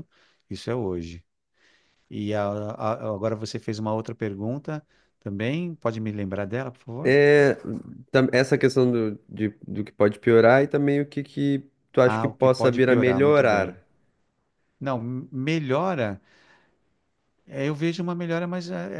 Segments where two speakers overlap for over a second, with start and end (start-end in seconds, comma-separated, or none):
12.1-13.8